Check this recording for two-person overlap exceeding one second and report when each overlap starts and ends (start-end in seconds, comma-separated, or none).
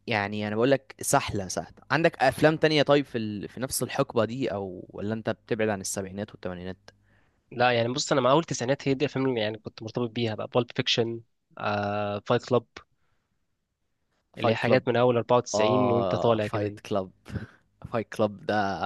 15.5-16.8